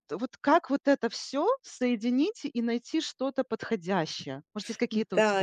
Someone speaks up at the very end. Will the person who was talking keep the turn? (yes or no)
no